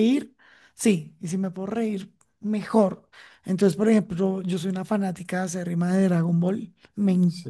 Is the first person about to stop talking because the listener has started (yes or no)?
no